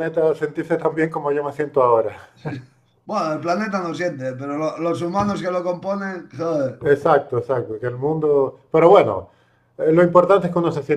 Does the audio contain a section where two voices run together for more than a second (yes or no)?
no